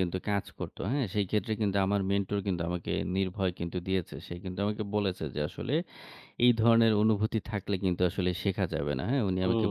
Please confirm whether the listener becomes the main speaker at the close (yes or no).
yes